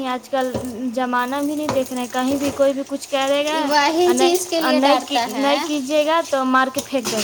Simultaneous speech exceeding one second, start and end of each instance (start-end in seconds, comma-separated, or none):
4.0-5.5